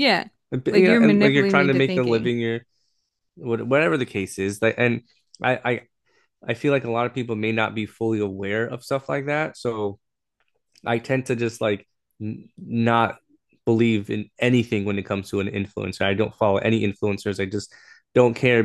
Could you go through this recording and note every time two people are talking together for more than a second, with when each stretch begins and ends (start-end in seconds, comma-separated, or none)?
0.7-2.3